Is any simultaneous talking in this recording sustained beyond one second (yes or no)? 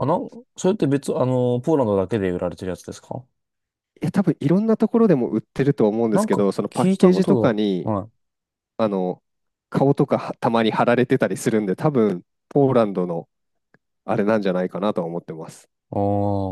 yes